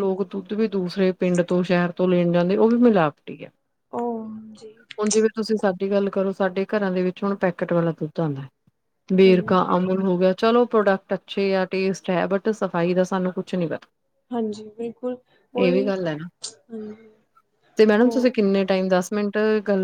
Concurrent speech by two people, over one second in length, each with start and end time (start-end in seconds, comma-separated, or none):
none